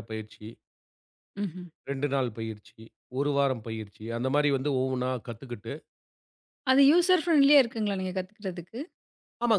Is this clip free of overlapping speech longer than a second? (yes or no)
yes